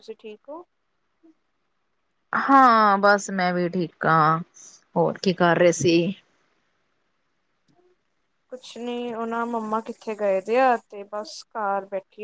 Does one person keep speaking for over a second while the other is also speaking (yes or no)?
no